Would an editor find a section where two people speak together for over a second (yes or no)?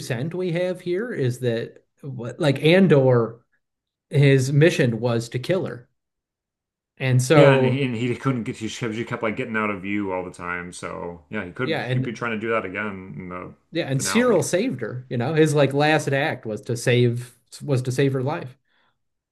no